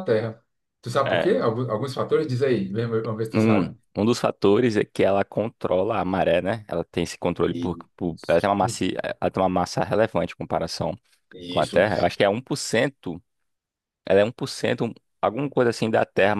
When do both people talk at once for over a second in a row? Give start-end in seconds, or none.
none